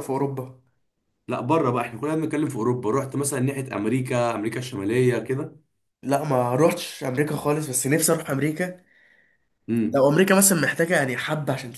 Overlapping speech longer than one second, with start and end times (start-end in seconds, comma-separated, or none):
none